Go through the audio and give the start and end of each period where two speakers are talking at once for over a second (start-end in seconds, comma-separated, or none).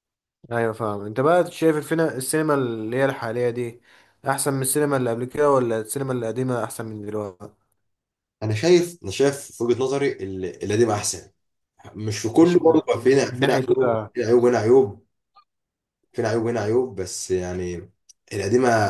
12.4-14.1